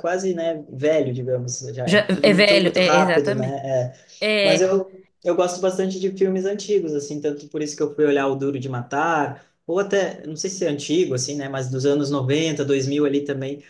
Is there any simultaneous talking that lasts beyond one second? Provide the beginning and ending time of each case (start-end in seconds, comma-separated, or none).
1.9-3.6